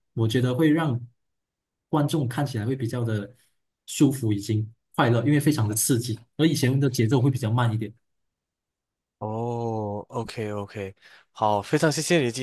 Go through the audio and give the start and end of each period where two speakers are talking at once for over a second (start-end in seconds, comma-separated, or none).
none